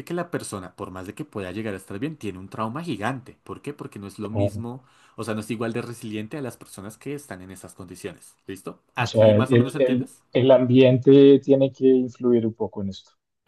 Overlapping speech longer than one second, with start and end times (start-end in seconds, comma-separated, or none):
9.0-10.2